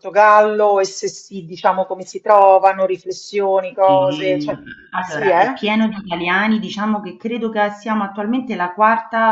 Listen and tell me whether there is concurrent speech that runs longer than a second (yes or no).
no